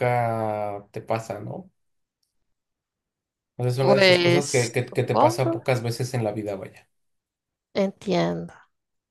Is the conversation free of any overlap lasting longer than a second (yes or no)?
no